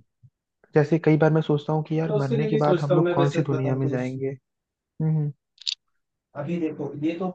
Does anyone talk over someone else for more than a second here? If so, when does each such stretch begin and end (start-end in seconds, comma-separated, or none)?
2.0-3.9